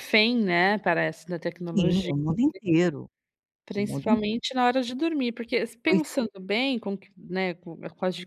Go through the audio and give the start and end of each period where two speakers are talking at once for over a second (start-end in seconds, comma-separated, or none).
none